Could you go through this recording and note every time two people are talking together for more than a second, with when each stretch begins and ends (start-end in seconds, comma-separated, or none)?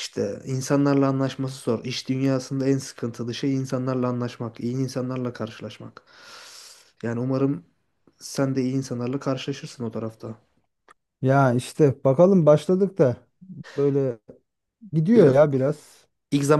none